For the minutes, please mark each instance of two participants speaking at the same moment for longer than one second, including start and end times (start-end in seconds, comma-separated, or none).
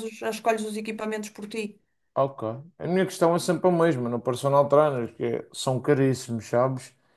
none